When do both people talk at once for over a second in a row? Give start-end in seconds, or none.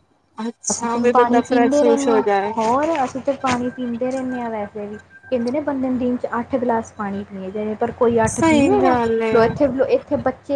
0.7-2.2